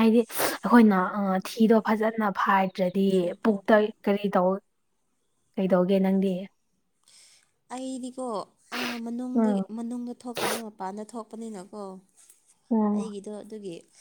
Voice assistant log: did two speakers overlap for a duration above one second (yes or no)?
no